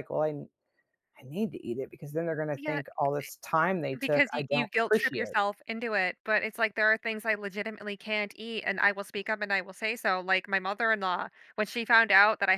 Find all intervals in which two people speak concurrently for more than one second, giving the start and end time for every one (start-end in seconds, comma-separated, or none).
4.0-5.4